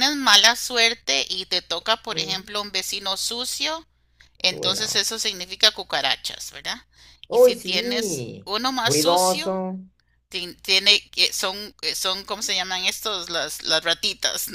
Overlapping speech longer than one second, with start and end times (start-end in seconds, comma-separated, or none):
7.3-9.6